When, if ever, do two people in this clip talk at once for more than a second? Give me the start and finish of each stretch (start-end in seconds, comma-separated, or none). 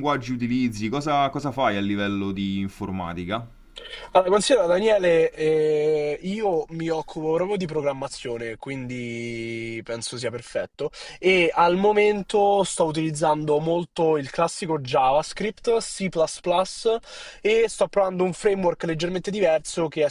none